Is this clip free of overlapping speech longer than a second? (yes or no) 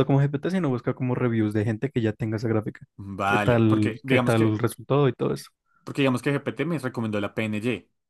no